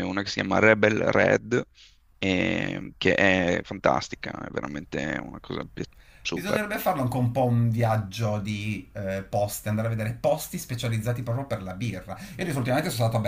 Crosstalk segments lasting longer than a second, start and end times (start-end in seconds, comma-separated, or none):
none